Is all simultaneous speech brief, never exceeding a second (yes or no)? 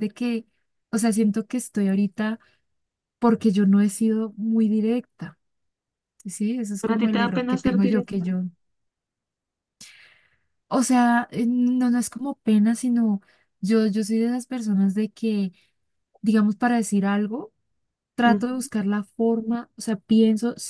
no